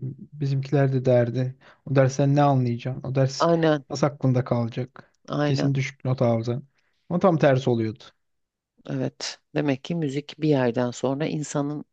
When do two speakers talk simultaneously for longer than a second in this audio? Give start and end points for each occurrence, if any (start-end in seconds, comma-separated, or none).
none